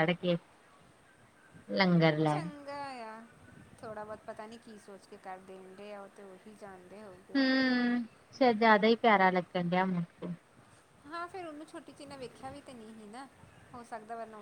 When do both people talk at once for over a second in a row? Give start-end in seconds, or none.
none